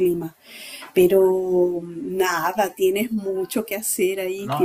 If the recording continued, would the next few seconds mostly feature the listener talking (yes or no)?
yes